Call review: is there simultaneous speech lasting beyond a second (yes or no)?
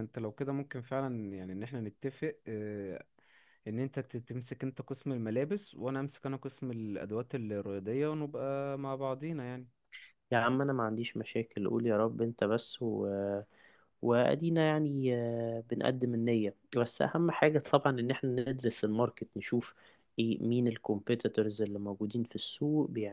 no